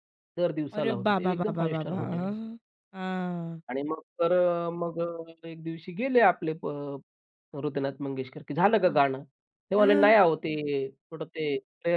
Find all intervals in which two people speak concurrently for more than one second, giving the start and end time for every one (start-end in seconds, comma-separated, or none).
0.8-2.4